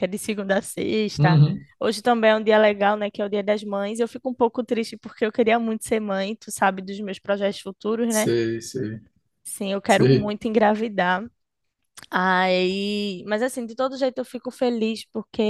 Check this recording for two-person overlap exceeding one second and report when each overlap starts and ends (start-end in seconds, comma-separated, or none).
none